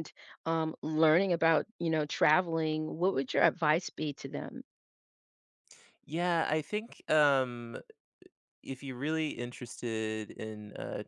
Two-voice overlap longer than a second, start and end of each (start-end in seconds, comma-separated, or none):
none